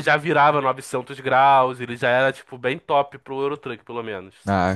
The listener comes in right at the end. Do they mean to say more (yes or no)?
yes